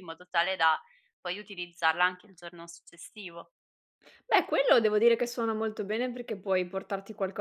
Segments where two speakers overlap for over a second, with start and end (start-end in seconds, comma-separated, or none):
none